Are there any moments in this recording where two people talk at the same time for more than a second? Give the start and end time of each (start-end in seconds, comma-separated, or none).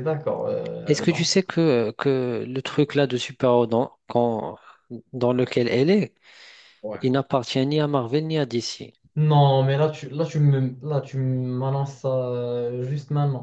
none